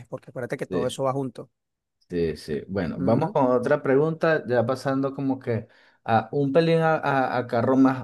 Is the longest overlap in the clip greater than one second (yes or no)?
no